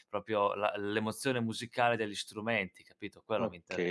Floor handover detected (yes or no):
yes